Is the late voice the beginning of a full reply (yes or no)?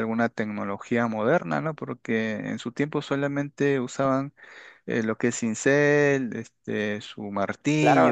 yes